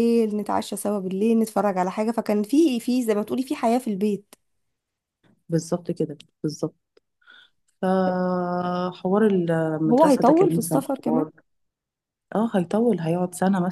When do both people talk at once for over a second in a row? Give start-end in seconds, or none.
9.9-11.3